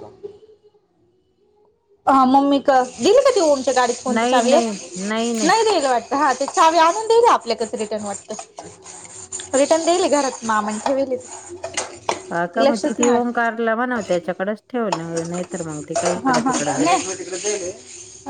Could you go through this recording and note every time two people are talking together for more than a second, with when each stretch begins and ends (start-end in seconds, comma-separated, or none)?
none